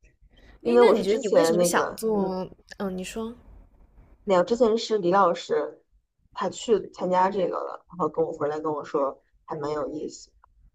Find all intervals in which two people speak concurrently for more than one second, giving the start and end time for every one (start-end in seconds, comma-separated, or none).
0.6-2.4